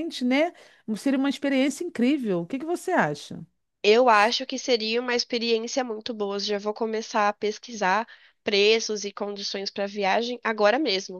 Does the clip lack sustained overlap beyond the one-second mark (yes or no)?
yes